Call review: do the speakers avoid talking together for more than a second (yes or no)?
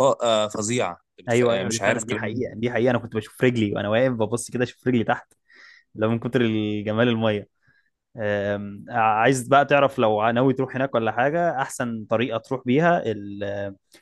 no